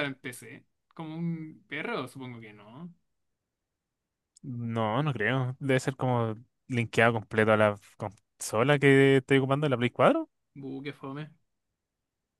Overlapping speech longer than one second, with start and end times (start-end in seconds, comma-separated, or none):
none